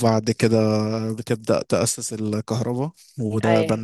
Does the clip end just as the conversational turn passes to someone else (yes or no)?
no